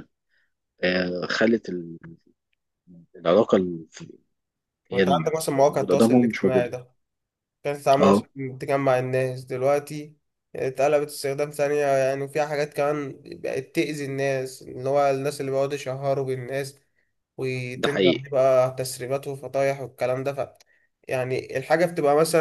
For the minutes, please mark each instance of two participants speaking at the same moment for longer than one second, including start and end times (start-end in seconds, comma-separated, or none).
4.9-6.7